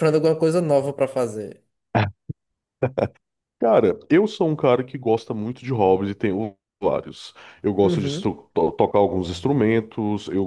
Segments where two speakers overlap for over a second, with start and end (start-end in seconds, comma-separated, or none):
none